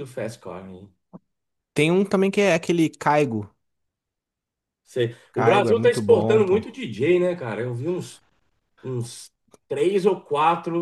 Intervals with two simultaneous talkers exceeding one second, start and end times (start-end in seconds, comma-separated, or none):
5.3-6.6